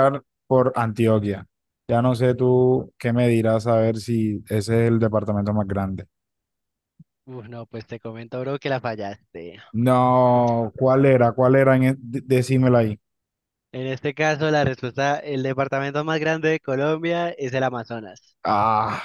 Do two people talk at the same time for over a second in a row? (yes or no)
no